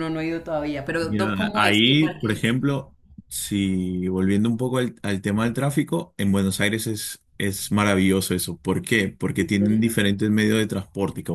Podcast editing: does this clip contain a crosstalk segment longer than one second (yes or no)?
yes